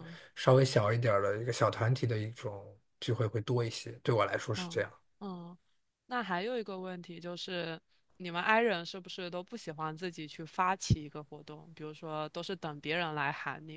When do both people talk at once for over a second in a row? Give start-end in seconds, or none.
none